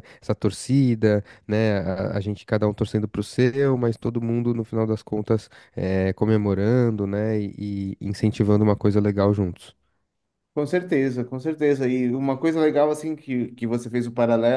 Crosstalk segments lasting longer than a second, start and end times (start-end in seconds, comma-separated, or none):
none